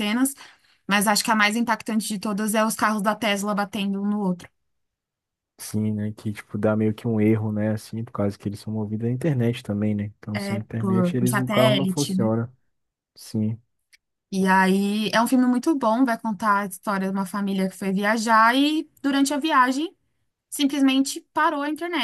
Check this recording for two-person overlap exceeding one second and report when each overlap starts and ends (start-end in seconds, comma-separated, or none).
10.3-12.3